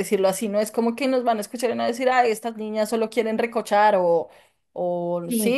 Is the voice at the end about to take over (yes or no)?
no